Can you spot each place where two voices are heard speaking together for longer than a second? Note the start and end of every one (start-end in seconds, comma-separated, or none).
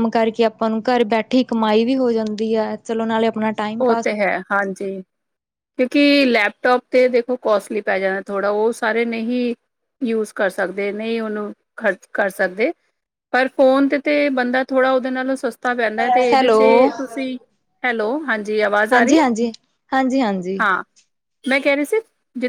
none